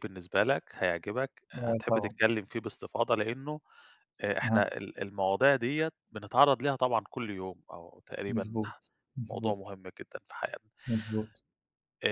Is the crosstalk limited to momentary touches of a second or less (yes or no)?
yes